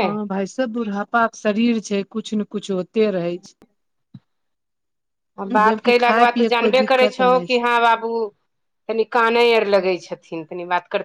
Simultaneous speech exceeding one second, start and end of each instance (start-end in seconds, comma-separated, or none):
5.6-7.6